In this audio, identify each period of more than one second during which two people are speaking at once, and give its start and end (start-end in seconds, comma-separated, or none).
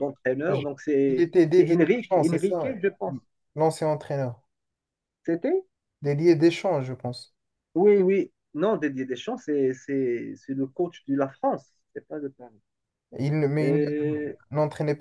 1.1-2.7